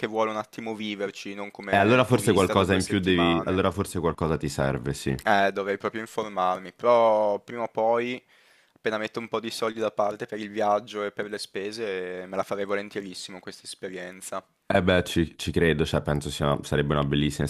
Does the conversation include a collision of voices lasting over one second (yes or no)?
yes